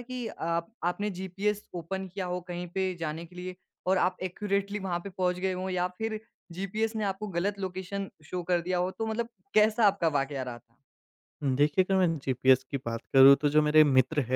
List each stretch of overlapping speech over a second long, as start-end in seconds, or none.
none